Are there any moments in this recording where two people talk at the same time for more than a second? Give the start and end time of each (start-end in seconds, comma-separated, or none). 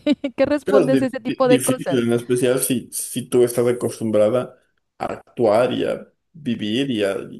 0.6-2.1